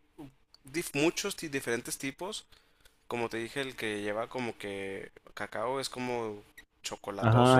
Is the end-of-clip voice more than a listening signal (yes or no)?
yes